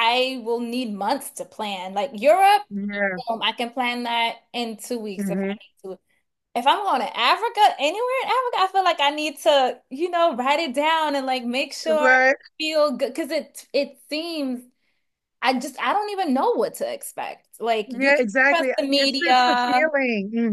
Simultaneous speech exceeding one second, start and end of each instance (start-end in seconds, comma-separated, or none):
17.9-19.9